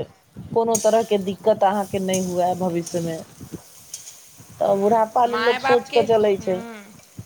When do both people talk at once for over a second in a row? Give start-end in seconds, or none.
4.6-6.5